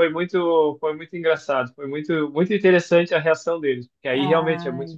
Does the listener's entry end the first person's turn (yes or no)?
no